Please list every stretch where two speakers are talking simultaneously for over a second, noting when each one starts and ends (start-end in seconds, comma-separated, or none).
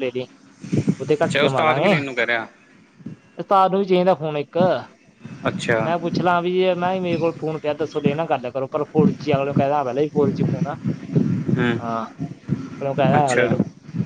1.2-2.5